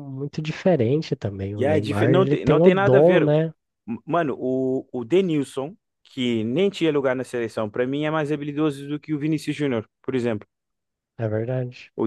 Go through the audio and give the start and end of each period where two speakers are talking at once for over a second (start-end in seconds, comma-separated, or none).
1.6-3.2